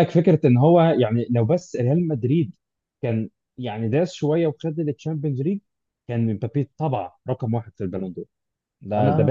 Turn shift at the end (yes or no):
yes